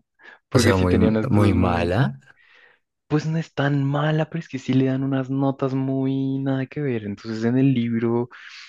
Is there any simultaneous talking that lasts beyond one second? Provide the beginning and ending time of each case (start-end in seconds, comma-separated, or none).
0.5-2.0